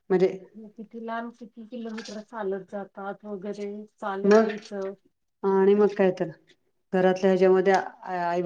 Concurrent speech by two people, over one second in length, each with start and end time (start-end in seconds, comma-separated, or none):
none